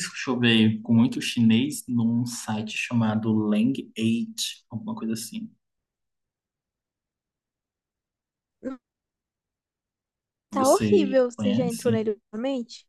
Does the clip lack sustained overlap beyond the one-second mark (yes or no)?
no